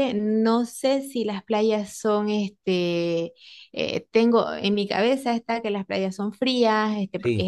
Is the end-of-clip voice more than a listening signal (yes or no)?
no